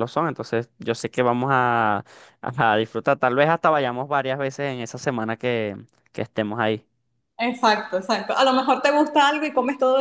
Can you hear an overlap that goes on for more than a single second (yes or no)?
no